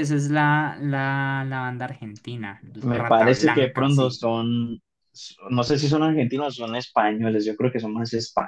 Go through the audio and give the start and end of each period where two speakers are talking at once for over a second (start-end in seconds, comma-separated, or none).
2.8-4.2